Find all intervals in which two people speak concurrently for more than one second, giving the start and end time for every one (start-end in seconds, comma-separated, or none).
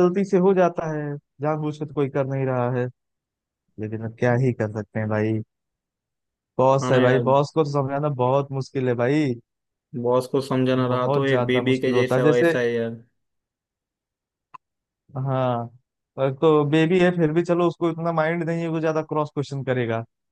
10.9-12.6